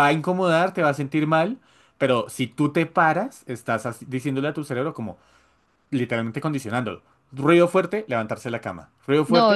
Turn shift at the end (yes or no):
yes